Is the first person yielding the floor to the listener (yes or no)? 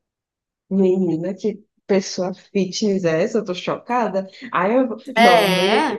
no